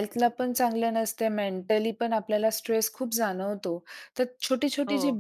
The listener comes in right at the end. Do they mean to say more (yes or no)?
no